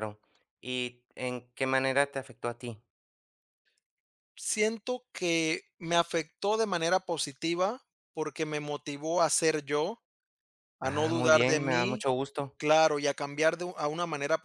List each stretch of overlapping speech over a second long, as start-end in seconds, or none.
10.8-12.1